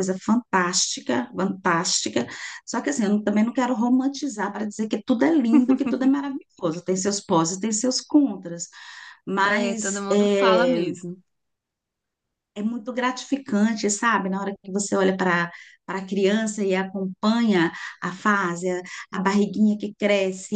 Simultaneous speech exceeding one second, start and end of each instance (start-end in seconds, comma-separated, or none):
9.4-10.8